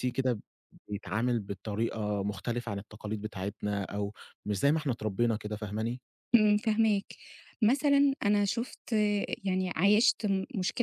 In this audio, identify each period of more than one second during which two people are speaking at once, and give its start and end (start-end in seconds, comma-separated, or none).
none